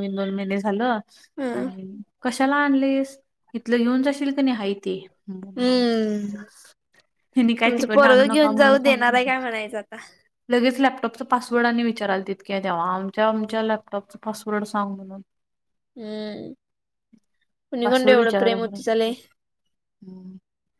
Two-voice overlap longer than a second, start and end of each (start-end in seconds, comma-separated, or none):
7.7-9.3